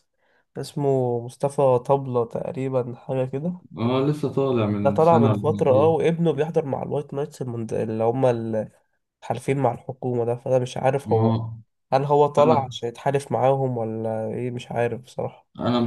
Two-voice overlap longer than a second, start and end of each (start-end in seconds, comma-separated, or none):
4.8-6.1